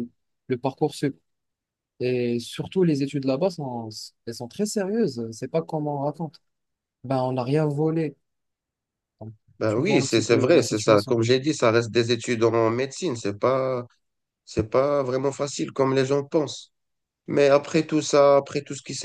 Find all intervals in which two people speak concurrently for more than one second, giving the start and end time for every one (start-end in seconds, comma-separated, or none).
9.6-11.2